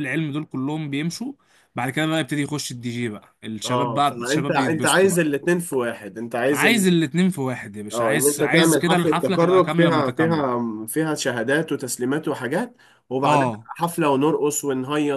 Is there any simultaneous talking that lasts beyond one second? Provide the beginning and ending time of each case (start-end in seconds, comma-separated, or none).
3.6-5.3, 7.9-10.4